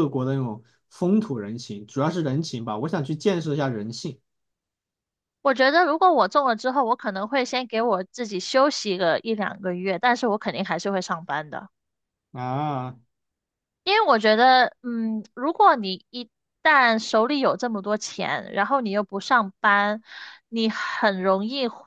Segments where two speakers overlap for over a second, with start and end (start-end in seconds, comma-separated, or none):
none